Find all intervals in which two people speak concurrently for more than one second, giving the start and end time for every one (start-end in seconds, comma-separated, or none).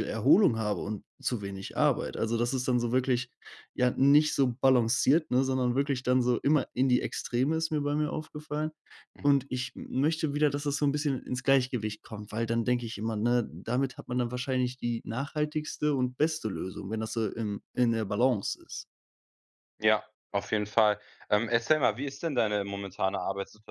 none